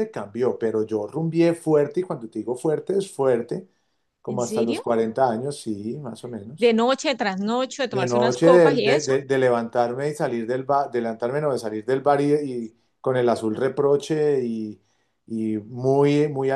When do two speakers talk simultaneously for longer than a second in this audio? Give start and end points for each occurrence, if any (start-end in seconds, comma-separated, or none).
7.9-9.1